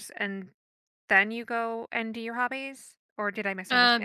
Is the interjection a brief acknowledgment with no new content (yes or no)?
no